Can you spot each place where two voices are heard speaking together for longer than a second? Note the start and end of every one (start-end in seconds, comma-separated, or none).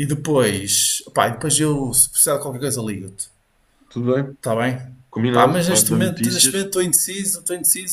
5.3-6.7